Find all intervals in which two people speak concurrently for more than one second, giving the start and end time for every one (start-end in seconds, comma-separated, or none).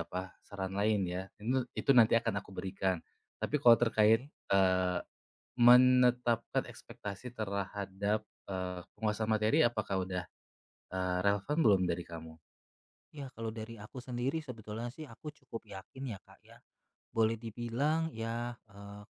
none